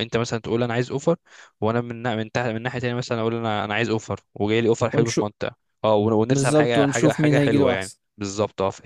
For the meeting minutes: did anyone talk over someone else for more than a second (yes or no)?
yes